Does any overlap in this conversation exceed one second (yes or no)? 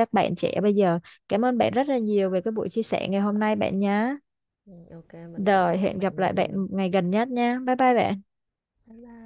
yes